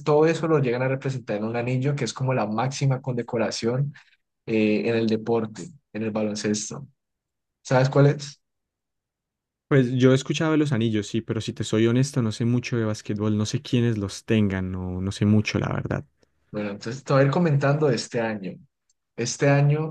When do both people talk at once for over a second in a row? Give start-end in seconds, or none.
none